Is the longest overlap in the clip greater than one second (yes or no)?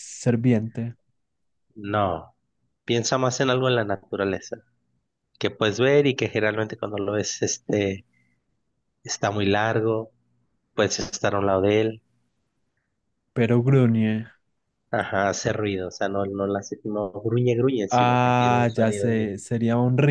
yes